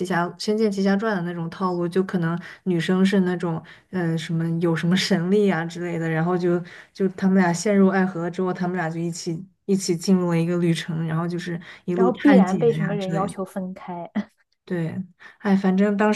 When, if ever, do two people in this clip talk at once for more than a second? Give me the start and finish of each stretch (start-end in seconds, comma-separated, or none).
11.9-13.3